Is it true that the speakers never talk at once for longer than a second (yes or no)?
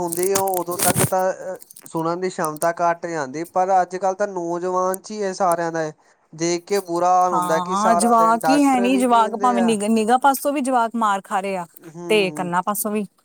no